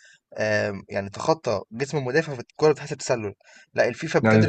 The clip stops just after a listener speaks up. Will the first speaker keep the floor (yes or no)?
yes